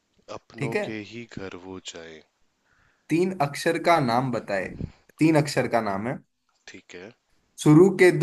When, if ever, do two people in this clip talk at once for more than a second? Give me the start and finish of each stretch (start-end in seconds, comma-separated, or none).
none